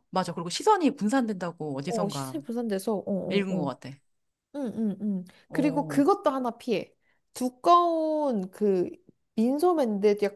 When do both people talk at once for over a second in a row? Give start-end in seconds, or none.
none